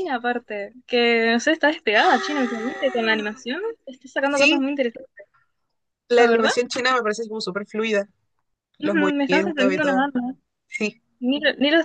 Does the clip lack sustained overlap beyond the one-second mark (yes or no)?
no